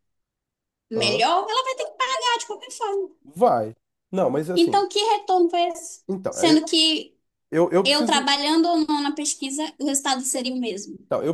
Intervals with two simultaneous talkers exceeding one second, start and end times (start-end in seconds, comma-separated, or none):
none